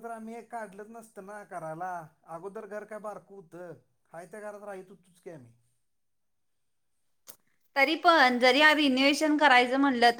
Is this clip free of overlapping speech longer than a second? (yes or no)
yes